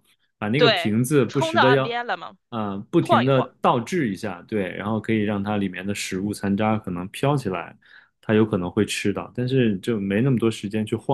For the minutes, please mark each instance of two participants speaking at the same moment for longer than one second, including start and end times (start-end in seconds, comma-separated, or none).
0.6-2.0